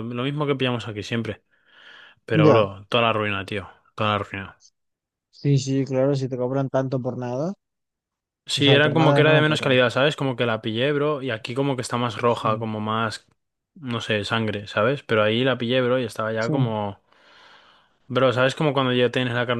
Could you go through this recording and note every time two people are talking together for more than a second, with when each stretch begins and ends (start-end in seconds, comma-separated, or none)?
8.6-9.8